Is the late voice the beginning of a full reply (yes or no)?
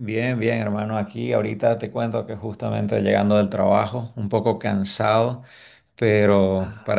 no